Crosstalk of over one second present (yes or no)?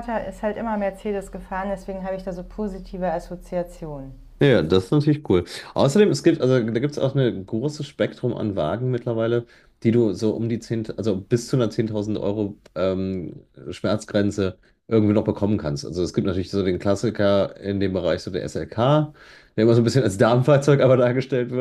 no